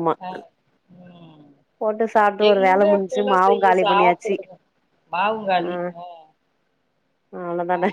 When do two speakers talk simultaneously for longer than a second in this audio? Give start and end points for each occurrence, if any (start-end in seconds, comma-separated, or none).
2.5-4.3